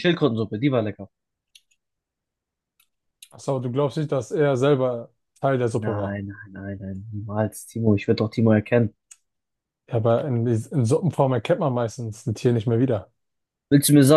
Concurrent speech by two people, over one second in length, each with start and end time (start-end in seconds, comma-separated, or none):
none